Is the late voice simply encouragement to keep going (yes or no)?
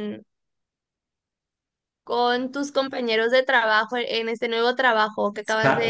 no